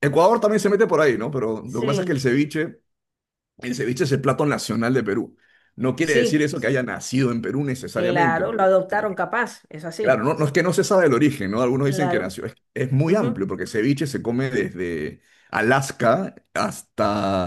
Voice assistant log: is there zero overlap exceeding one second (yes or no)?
no